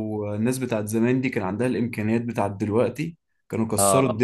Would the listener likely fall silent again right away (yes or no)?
no